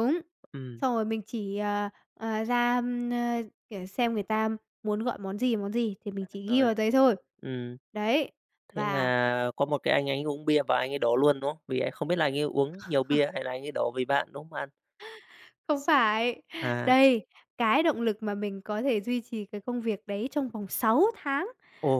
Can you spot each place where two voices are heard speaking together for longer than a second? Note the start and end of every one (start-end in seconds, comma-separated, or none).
none